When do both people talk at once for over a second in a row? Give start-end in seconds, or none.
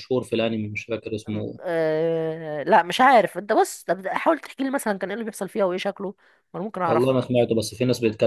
none